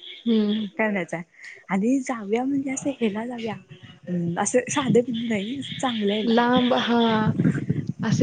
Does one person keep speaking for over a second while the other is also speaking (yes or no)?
no